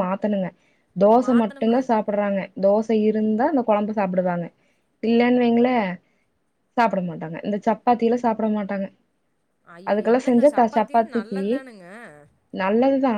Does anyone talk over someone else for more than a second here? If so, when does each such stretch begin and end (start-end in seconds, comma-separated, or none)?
9.9-11.4